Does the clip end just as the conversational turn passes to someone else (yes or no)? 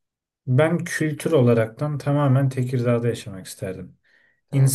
no